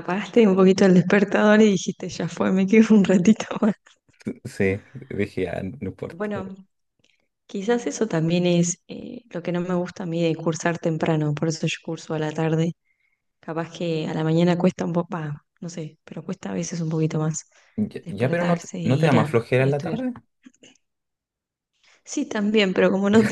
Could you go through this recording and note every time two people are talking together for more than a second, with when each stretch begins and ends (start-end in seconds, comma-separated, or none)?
18.0-20.0